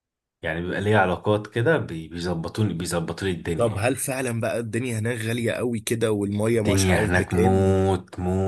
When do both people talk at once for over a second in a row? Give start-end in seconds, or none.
6.5-7.8